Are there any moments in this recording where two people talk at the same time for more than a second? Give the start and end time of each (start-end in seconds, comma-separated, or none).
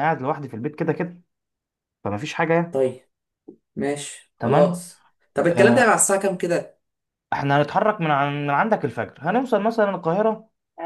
none